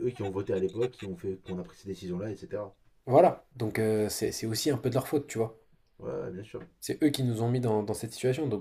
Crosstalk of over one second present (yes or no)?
no